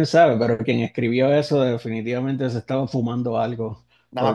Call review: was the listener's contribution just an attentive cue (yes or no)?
no